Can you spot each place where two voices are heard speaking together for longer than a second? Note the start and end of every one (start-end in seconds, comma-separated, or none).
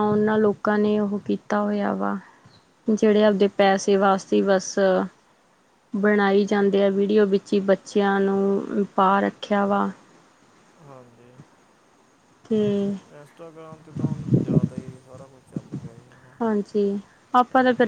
none